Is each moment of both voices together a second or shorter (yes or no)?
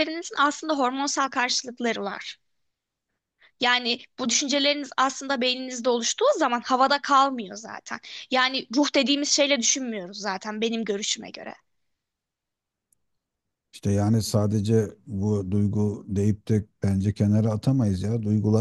yes